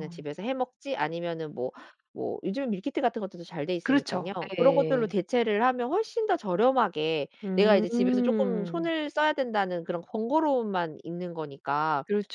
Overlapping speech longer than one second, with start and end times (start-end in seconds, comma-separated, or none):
3.8-5.1, 7.4-8.9